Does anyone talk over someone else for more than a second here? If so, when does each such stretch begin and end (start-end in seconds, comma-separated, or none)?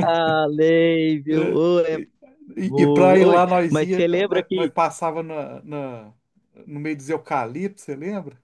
2.6-4.7